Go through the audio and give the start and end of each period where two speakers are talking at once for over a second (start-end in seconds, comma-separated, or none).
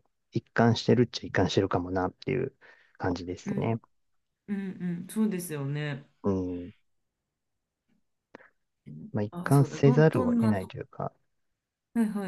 9.3-10.7